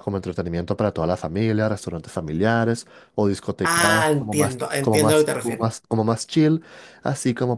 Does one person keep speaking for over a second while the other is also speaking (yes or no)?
yes